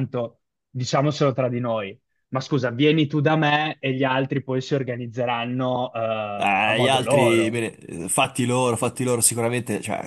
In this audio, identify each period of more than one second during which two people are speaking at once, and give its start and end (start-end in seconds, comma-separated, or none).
6.3-7.6